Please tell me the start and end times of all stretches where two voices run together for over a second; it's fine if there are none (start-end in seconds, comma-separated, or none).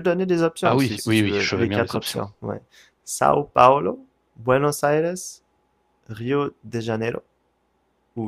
0.6-2.2